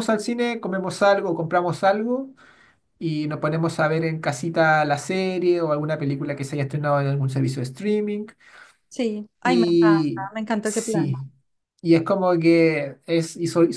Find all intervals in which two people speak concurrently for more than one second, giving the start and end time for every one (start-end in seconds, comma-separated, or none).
9.4-11.1